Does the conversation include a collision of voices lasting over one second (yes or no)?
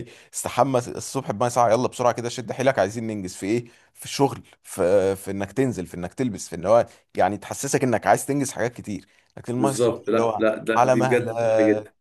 yes